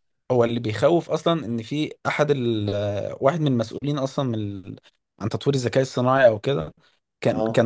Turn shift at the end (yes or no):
no